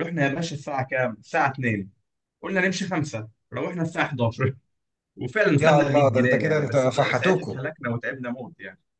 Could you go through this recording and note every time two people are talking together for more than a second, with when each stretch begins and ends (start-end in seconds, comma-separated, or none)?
5.6-7.6